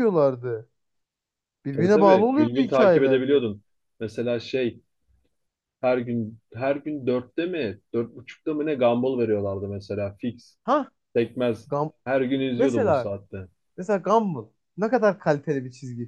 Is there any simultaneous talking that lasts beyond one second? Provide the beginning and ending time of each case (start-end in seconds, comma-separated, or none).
1.8-3.4